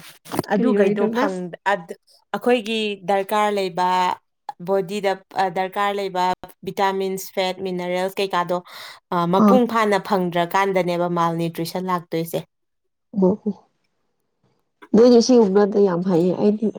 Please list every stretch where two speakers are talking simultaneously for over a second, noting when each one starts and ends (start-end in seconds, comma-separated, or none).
none